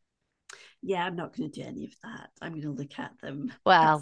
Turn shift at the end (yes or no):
yes